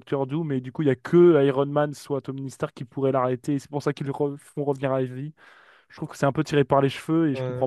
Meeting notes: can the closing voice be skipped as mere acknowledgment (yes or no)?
no